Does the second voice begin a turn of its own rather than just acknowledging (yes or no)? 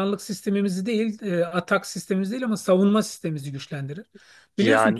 no